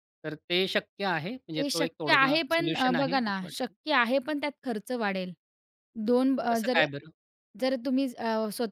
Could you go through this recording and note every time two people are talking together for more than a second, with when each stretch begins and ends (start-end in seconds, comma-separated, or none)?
1.6-3.7